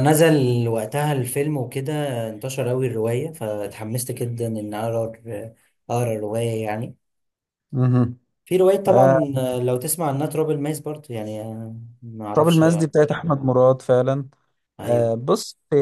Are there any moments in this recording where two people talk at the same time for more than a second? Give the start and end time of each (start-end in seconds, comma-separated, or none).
none